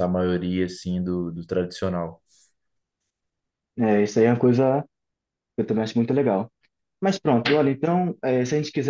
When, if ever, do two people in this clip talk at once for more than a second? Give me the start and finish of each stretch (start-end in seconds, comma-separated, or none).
none